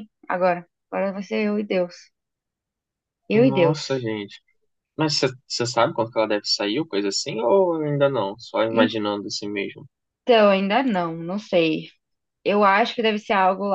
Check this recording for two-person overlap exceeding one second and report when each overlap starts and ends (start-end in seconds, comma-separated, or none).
none